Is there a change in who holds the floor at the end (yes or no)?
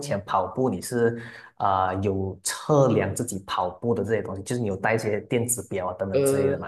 yes